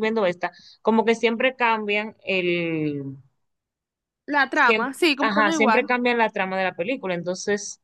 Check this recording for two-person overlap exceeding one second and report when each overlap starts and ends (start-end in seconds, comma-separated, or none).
4.5-5.9